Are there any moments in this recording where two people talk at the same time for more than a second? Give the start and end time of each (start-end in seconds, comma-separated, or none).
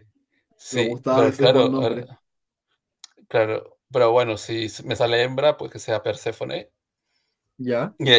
0.7-2.1